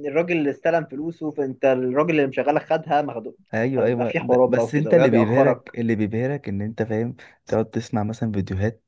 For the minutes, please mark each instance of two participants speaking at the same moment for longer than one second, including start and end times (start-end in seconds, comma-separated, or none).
3.8-5.7